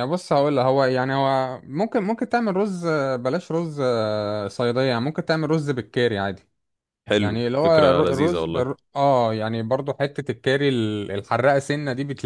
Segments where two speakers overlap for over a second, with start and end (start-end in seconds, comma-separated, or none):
7.2-8.7